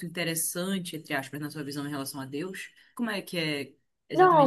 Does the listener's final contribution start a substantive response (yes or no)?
yes